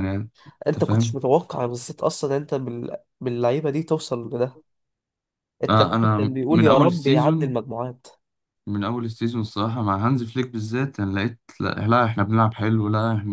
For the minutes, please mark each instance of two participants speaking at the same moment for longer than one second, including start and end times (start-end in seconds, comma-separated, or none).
5.7-7.5